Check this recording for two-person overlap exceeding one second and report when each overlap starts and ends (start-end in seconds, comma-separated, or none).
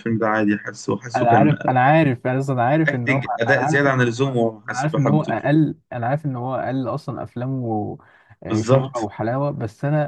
2.9-5.5